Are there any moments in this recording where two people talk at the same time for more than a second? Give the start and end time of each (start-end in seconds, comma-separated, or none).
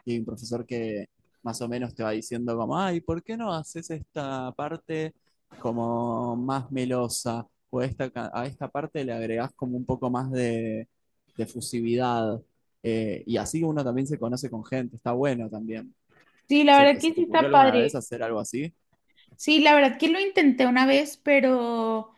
16.7-18.0